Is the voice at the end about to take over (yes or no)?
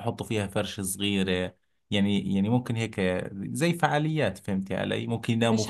yes